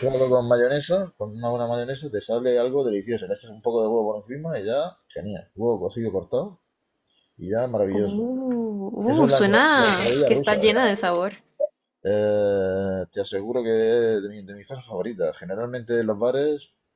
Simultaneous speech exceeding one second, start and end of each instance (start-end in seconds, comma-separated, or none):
9.1-11.0